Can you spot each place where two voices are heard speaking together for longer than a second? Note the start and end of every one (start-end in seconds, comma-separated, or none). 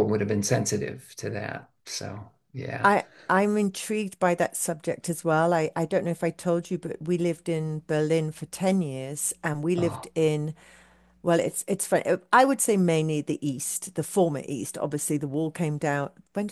none